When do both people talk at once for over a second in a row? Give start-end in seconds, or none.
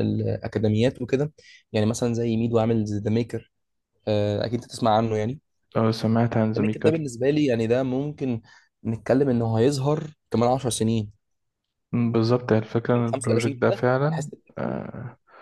13.1-14.8